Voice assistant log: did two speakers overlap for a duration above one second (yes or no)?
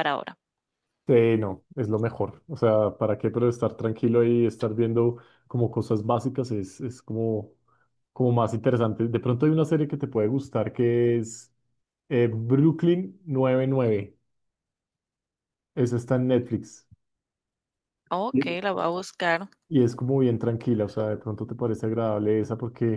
no